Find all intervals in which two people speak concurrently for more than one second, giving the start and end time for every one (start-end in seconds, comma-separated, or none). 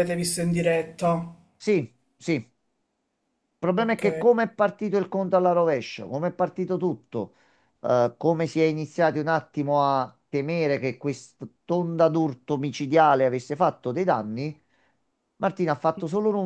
none